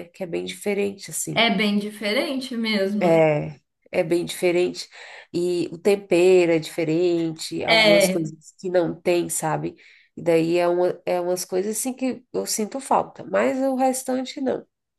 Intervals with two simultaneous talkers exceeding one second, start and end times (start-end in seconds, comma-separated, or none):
none